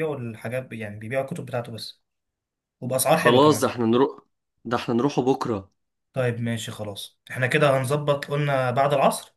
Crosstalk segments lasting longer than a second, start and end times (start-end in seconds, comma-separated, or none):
none